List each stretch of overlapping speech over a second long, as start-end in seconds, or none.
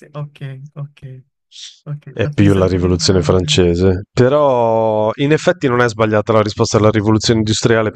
2.1-3.6